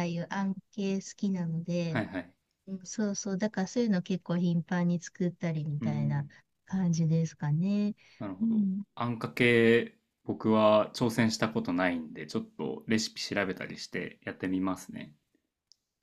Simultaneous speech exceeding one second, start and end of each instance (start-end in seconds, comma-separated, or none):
none